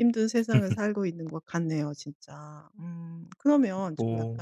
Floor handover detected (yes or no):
no